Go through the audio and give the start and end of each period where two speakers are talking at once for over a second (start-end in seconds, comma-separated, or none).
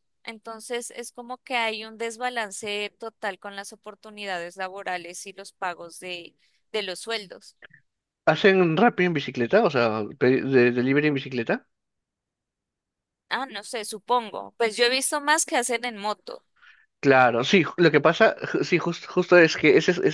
none